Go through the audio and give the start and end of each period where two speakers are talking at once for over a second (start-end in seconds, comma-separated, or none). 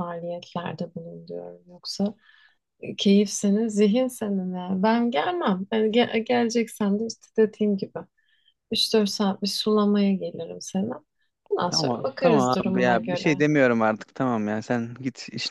11.7-13.4